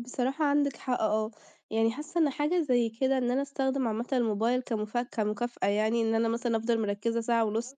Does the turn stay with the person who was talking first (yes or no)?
yes